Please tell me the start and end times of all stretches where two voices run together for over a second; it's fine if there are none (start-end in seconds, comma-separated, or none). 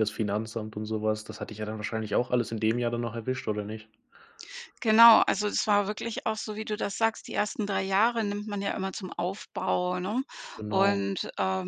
none